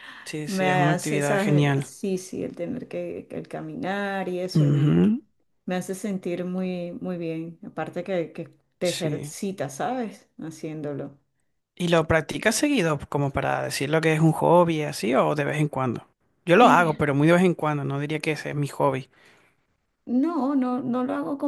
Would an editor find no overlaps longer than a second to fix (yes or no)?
no